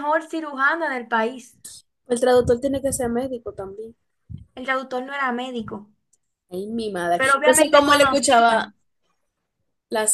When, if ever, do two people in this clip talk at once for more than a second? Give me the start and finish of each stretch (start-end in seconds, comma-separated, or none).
7.2-8.7